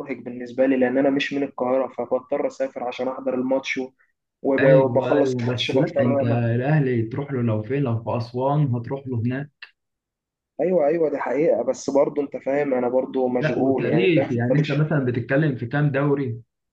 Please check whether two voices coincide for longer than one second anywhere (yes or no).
yes